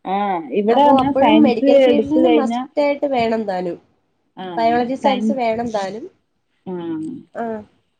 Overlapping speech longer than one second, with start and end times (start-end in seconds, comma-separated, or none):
0.8-2.5